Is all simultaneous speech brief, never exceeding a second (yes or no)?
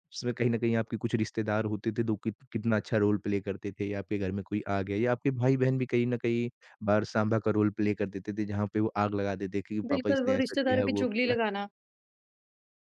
no